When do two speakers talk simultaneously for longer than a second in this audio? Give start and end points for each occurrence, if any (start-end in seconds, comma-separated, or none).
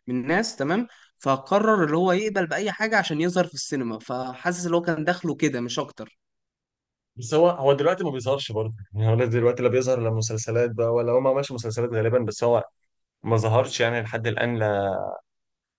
none